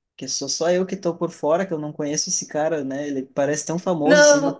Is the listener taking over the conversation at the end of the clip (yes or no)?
no